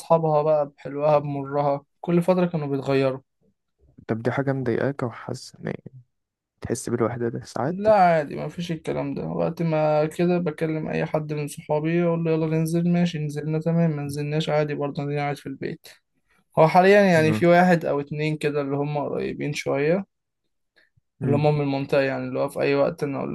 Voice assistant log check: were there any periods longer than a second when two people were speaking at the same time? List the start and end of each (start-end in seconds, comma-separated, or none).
none